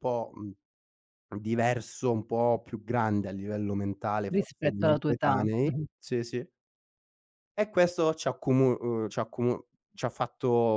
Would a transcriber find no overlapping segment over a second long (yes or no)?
no